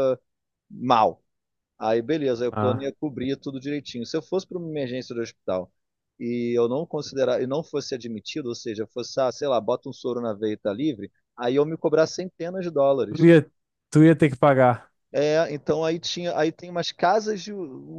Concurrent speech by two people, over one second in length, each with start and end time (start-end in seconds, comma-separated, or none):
none